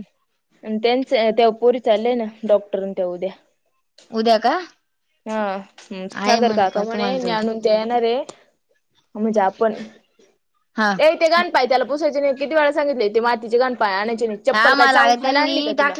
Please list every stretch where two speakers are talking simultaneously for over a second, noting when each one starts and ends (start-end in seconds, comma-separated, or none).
none